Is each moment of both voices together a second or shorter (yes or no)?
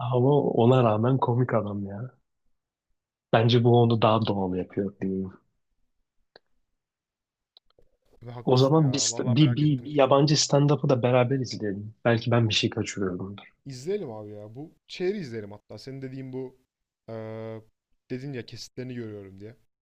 no